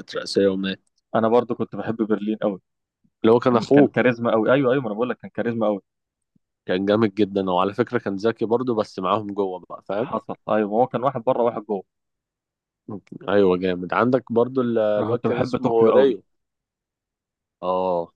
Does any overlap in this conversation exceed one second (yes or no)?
yes